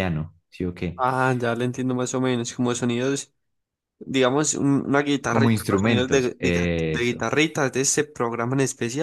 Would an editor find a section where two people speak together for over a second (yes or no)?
yes